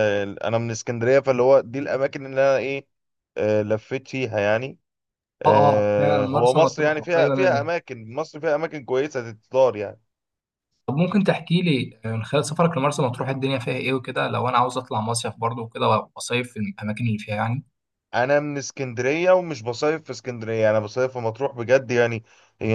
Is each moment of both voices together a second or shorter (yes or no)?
no